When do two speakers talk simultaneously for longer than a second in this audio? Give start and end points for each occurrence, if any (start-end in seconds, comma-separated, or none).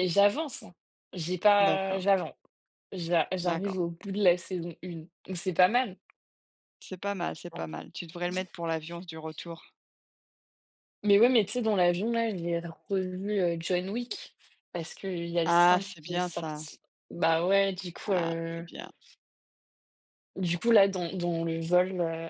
15.5-16.7